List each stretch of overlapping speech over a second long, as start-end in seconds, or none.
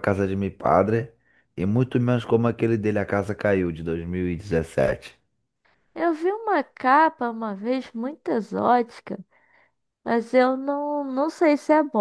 none